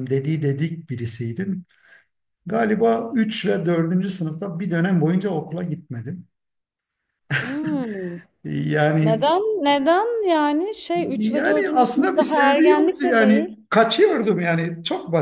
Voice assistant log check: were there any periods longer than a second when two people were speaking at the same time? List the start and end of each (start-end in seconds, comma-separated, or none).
11.1-13.5